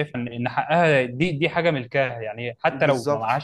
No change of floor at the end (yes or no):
yes